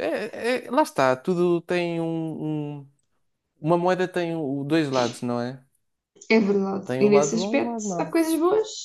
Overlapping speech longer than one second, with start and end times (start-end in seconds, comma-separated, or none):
6.9-8.2